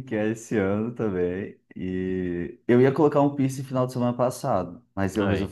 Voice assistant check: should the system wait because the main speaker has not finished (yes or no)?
yes